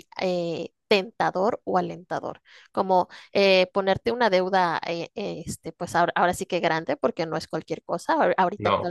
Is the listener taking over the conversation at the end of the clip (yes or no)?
no